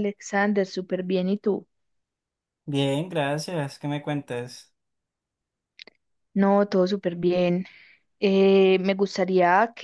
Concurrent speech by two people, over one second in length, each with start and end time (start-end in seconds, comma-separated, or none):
none